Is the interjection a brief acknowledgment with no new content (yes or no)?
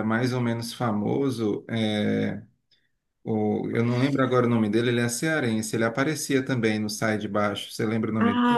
no